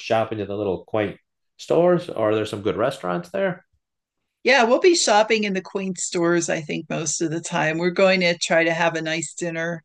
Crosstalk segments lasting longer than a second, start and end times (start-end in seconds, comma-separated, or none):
none